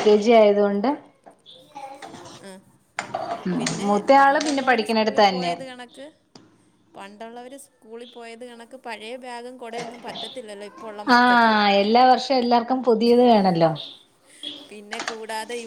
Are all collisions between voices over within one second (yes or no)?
no